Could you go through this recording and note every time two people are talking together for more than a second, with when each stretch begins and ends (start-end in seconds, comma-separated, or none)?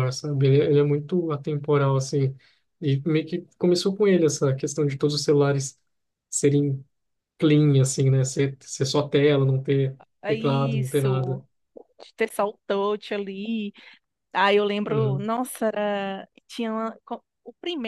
10.2-11.4